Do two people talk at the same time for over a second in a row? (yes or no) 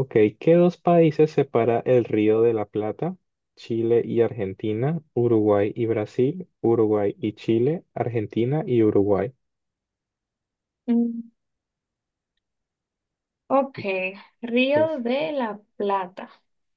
no